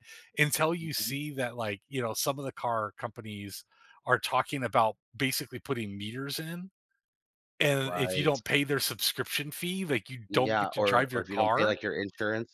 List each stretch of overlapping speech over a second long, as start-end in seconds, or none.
10.3-11.8